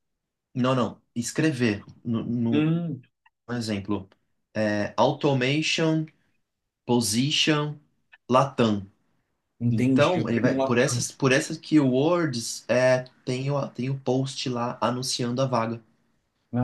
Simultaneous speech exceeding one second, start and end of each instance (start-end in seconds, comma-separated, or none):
9.7-11.1